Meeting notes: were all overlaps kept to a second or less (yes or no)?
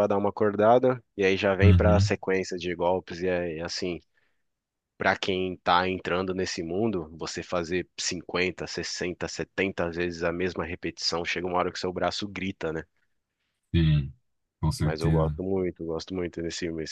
yes